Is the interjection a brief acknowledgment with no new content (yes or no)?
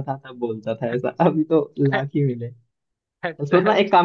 yes